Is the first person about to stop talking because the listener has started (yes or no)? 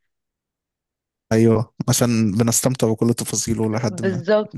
yes